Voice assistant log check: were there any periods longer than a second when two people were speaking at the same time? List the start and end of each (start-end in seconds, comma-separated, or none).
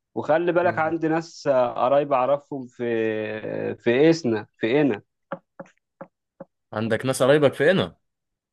none